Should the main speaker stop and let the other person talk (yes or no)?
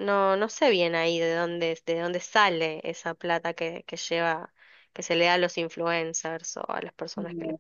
yes